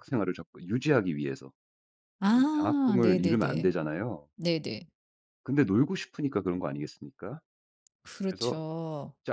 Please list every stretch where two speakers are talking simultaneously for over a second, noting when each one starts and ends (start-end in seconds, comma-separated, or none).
2.3-3.8